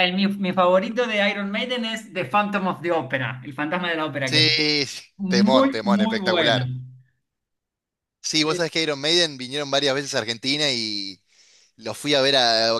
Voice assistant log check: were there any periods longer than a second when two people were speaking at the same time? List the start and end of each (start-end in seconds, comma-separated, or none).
5.2-6.7